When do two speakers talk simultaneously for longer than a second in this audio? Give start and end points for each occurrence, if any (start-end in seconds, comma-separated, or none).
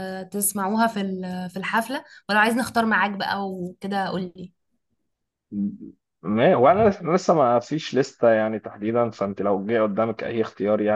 none